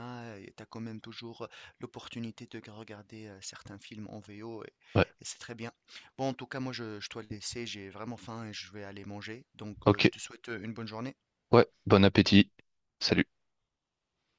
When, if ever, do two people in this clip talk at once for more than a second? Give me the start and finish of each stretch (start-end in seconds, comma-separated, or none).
none